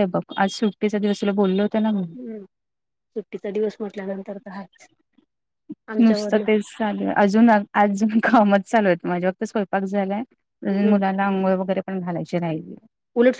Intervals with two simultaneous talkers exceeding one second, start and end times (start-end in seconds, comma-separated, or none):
none